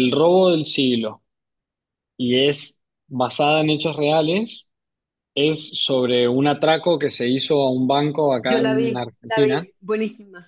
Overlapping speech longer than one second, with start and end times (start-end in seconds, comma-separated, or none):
8.4-9.7